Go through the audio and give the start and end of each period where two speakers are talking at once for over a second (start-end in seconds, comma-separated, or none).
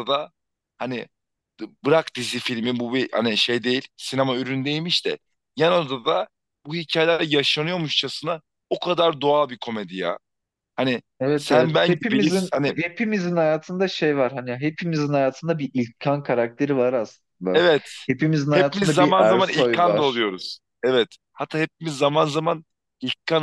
11.2-12.8, 18.5-20.3